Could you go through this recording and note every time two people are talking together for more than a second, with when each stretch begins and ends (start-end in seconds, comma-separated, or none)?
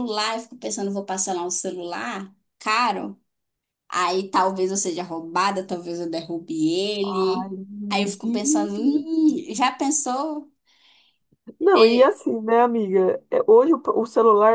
7.0-8.8